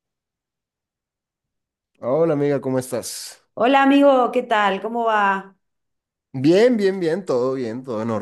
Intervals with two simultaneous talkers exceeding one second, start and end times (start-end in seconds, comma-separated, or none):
none